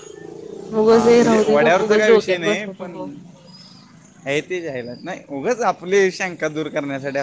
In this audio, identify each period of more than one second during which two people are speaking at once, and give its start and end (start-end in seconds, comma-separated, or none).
1.6-2.9